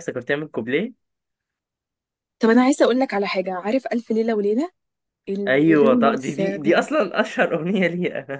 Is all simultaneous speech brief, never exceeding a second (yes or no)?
no